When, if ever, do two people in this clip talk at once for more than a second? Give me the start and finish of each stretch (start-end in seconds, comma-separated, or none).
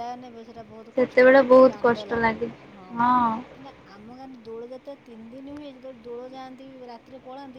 0.9-2.5